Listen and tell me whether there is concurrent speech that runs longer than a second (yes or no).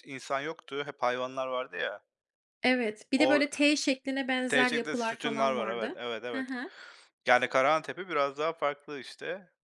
yes